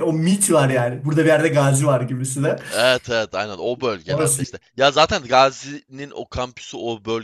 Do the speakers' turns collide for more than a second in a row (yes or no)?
no